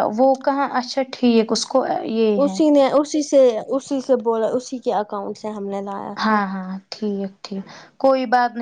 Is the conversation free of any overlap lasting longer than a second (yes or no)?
yes